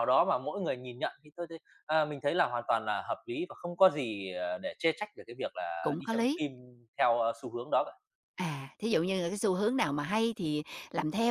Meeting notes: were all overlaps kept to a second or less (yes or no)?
yes